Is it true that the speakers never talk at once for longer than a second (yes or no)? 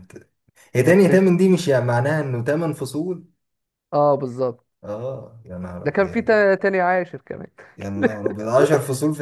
yes